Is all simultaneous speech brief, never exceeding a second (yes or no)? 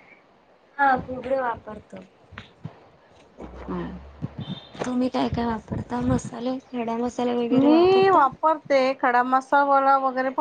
yes